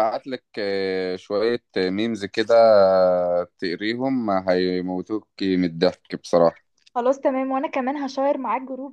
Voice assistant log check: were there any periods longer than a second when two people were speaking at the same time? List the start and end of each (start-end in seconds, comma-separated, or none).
none